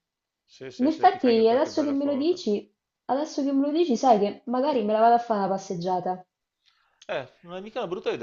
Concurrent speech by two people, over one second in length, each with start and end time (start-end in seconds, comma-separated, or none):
0.8-2.4